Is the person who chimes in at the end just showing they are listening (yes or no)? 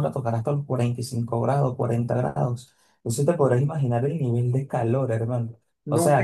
no